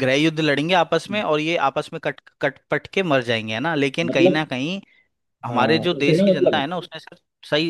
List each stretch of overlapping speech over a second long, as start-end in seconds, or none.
5.5-6.8